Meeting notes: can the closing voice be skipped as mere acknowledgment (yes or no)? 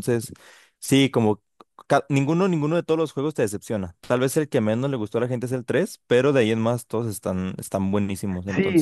no